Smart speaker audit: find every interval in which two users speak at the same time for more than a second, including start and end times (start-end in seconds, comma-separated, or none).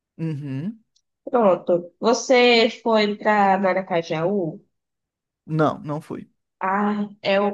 none